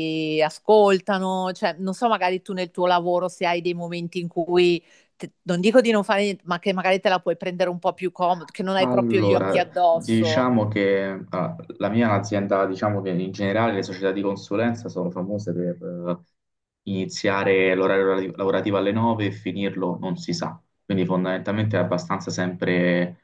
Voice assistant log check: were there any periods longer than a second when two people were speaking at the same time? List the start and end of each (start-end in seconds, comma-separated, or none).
8.8-10.5